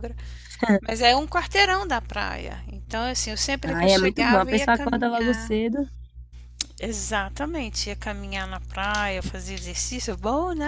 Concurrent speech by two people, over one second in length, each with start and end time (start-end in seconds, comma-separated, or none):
3.7-5.6